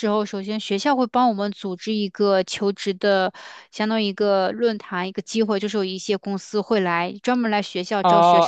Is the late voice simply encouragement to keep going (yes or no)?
no